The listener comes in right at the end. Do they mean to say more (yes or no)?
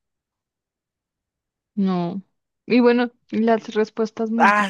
yes